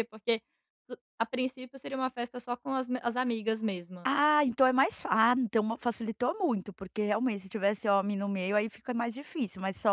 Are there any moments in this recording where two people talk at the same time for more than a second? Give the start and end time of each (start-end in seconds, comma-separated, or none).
none